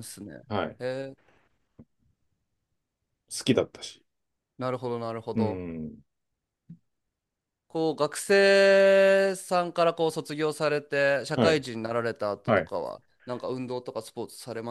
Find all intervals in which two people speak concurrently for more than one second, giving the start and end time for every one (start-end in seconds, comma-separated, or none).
none